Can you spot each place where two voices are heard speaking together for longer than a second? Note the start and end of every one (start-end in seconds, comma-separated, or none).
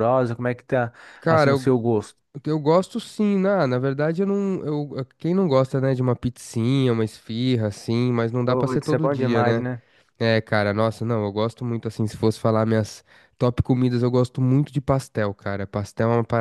8.4-9.7